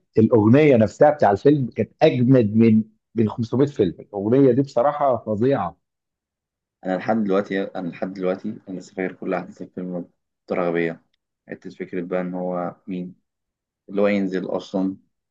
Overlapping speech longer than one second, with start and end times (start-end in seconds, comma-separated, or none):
none